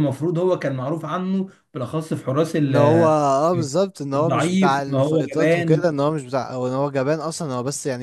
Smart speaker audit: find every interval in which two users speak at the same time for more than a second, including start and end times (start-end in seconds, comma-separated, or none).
4.2-5.8